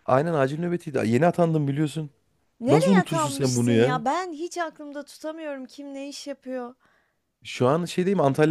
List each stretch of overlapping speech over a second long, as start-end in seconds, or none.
2.7-4.0